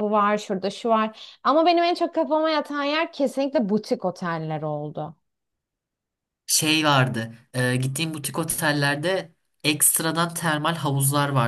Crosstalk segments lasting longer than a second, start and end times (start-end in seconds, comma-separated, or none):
none